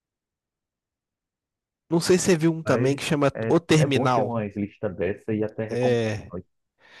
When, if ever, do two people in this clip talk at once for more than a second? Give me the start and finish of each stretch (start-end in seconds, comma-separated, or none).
2.6-4.4